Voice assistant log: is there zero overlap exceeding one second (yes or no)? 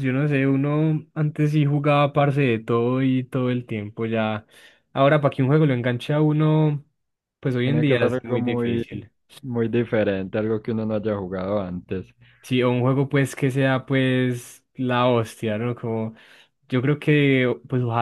no